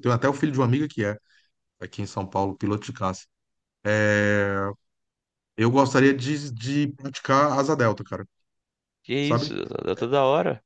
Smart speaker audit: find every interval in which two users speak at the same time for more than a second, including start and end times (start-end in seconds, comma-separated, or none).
none